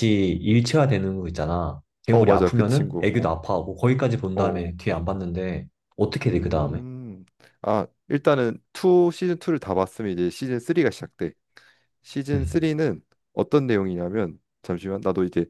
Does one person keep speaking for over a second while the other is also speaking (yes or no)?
yes